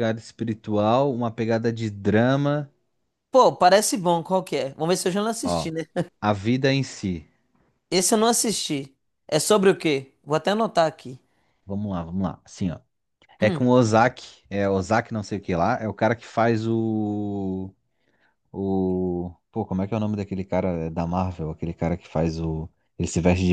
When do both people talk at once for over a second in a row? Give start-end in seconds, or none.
none